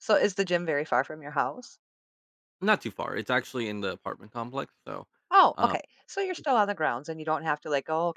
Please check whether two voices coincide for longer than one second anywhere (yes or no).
no